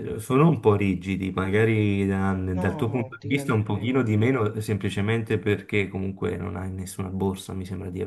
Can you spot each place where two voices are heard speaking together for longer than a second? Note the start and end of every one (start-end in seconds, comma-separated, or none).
2.6-4.1